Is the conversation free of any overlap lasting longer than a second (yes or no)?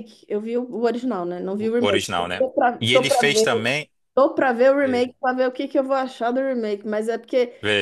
no